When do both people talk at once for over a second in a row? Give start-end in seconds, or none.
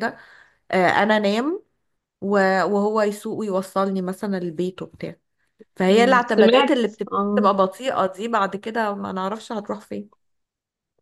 5.9-7.5